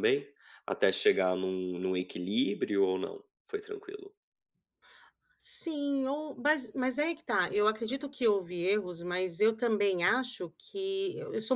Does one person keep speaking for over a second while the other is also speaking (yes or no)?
no